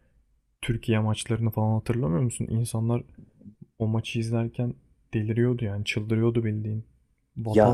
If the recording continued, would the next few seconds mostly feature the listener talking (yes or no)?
no